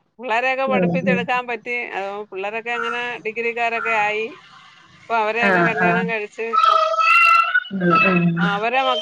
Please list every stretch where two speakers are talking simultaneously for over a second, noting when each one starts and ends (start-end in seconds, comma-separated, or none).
none